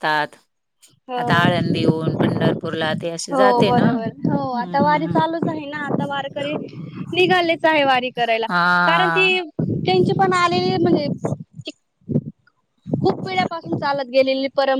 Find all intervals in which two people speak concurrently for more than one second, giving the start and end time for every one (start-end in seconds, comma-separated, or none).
3.3-5.2